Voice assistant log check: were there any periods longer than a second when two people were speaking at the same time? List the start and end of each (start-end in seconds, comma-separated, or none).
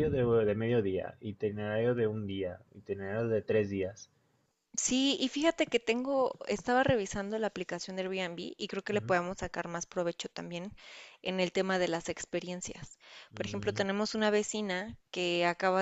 none